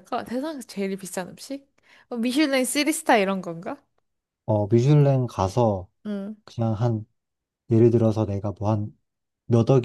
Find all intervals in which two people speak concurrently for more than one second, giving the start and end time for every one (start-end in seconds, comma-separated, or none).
none